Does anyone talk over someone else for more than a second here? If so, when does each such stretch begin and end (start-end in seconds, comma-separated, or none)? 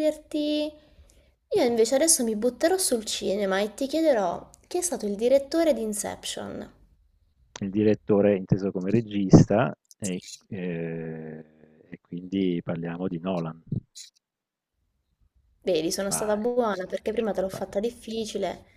16.1-17.8